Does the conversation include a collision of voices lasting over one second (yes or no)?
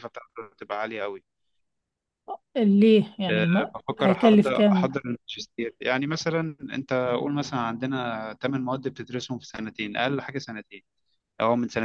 yes